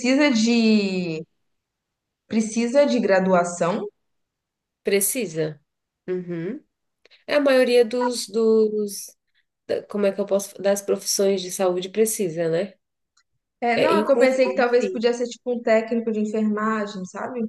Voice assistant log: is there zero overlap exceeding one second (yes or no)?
no